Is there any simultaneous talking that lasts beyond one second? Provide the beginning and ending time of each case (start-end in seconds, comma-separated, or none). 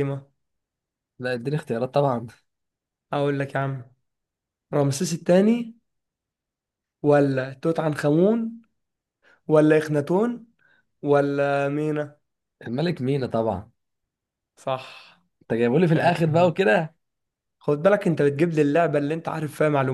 none